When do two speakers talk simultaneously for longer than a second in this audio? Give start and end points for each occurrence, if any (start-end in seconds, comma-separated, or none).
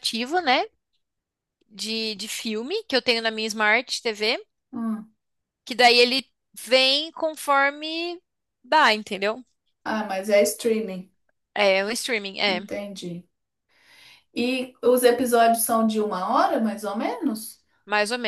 none